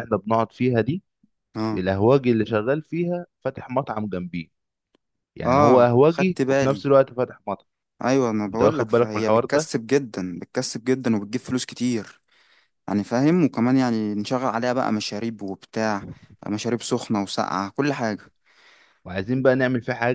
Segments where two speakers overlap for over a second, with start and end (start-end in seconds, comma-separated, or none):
5.5-6.8, 8.5-9.7